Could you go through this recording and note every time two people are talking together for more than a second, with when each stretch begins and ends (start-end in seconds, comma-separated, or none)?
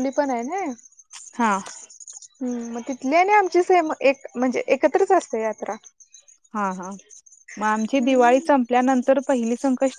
none